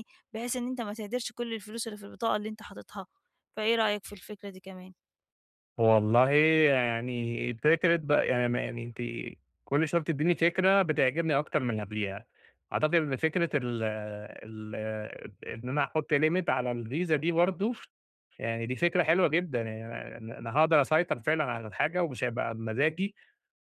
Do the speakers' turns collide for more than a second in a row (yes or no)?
no